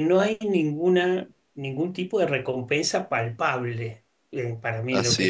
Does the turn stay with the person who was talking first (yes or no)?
yes